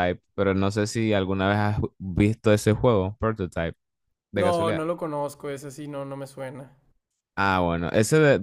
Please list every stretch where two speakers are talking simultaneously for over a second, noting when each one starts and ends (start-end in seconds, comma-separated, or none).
none